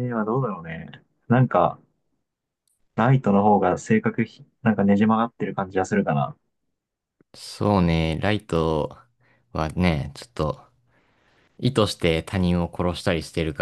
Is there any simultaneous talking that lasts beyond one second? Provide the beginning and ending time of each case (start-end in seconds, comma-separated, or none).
none